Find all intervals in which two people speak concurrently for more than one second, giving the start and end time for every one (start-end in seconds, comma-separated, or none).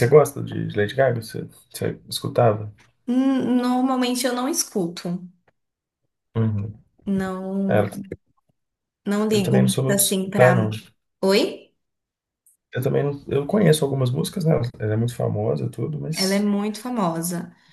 9.3-10.6